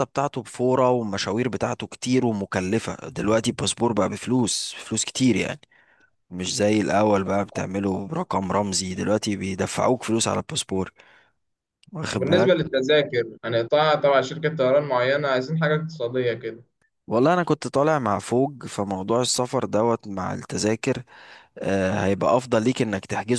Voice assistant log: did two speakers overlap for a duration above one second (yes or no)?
no